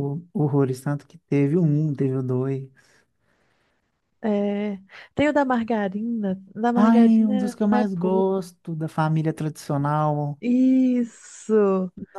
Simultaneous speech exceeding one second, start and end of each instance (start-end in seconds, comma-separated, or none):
6.7-8.4